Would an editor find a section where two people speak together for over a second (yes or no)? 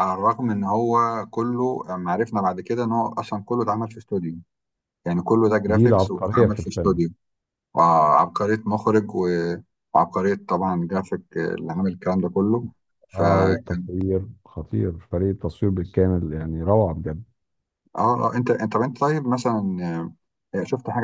yes